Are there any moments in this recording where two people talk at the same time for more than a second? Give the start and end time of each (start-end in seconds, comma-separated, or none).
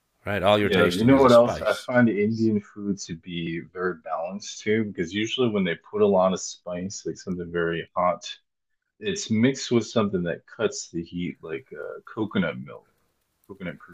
0.6-1.9